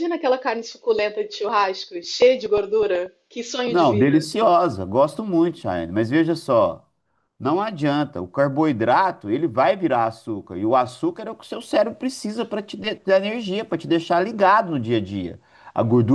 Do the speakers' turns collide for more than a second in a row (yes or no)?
no